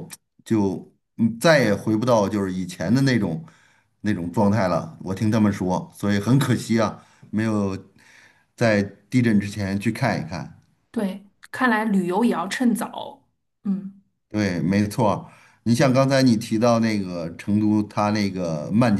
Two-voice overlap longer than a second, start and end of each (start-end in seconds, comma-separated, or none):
none